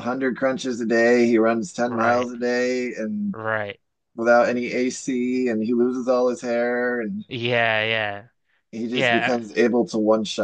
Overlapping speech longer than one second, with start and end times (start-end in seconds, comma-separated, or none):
none